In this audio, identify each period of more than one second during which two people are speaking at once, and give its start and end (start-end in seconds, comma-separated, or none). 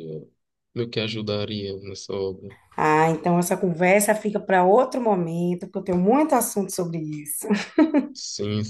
none